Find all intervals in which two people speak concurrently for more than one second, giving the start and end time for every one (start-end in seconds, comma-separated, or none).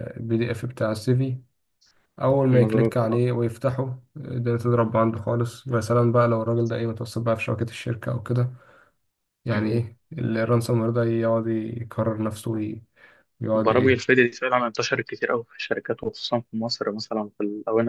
none